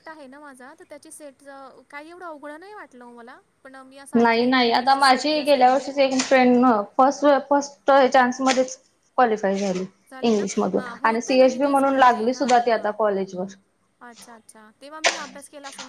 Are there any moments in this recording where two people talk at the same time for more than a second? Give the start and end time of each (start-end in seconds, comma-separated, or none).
4.2-5.9, 10.3-12.9